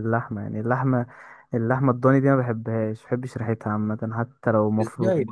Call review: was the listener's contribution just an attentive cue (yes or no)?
no